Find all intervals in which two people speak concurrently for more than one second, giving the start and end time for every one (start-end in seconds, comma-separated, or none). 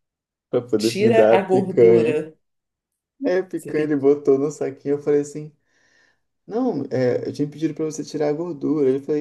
0.8-2.2